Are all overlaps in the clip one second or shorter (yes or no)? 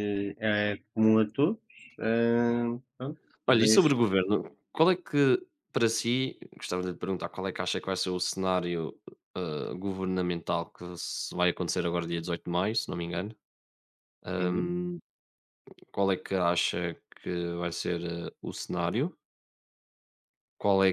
yes